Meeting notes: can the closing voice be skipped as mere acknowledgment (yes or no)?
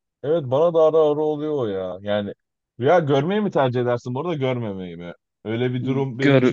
yes